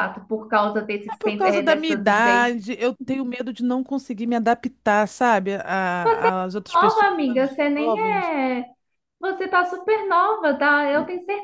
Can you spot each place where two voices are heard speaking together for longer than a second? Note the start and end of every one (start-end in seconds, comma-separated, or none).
1.1-2.5, 6.7-8.3